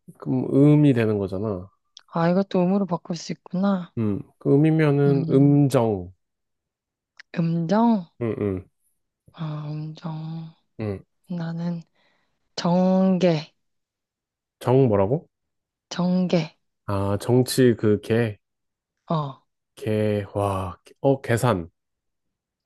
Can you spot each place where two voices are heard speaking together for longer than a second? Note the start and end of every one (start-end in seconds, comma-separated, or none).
none